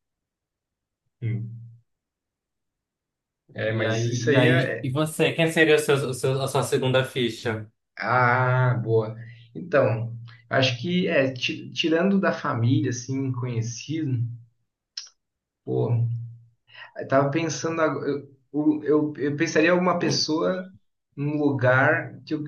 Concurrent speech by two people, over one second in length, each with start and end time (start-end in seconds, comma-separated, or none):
3.7-5.0